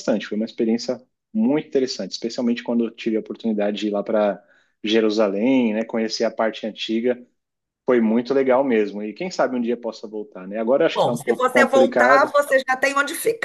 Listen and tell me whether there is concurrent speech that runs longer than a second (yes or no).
yes